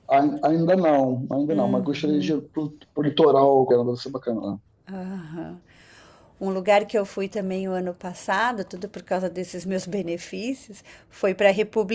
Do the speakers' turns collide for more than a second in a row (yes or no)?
no